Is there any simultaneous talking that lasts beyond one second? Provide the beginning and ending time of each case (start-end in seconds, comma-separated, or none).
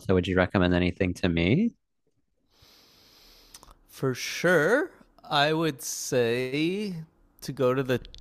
none